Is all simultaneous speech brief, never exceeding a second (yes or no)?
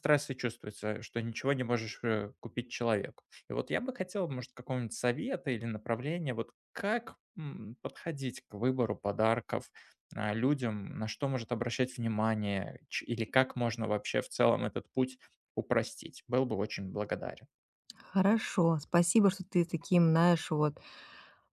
yes